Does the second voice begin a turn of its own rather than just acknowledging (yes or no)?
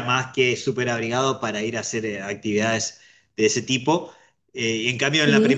no